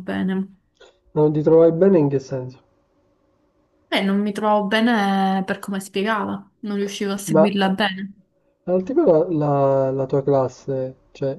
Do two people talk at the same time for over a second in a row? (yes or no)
no